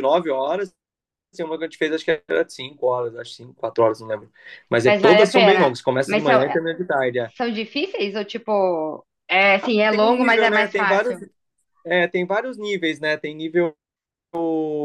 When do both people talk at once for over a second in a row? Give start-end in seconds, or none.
4.8-6.4, 9.9-11.2